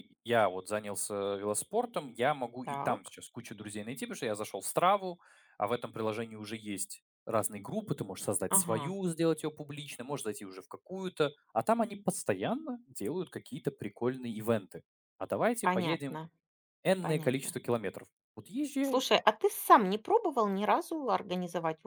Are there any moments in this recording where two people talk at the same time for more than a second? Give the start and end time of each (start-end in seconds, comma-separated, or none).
none